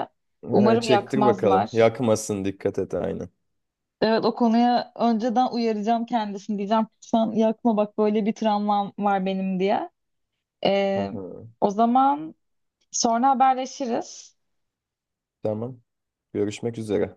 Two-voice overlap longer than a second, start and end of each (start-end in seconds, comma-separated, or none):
0.5-1.9